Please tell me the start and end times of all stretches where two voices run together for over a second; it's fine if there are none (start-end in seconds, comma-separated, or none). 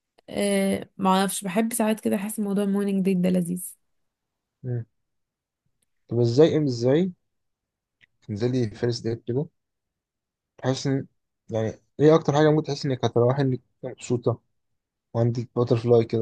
none